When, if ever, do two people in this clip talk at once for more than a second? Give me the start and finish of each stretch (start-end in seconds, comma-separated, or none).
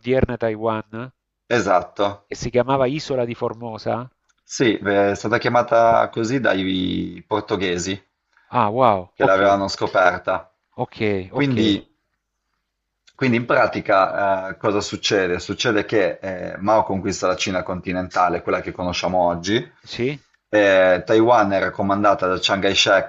none